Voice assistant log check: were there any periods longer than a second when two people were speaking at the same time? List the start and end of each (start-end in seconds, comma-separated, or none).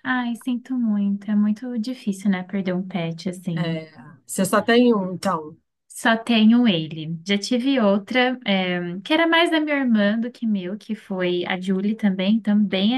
none